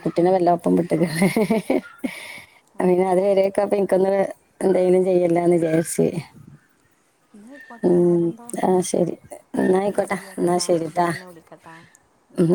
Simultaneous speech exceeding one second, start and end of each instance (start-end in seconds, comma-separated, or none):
9.9-11.8